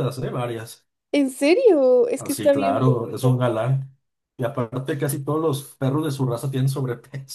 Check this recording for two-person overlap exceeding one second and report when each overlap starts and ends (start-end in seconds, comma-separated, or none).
2.1-3.4